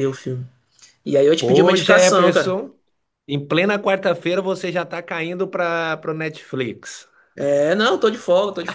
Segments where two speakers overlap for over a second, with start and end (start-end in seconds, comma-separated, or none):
1.4-2.6